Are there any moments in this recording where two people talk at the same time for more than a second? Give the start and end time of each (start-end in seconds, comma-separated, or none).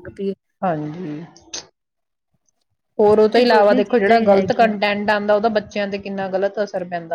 3.4-4.7